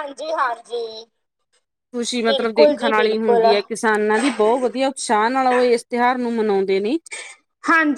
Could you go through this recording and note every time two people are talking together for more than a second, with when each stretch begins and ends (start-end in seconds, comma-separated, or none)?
2.3-3.5